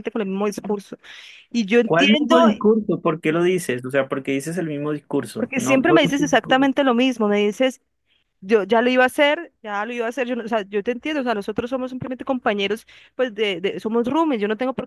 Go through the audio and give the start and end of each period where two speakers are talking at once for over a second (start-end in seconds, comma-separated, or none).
5.3-6.6